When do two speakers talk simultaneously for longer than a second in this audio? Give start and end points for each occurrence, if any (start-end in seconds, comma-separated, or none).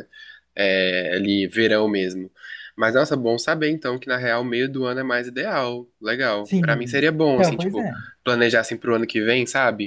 6.4-7.9